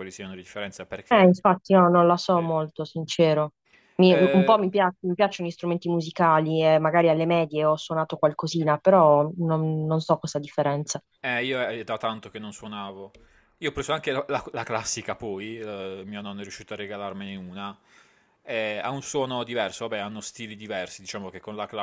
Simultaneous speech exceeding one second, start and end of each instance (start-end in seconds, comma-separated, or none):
none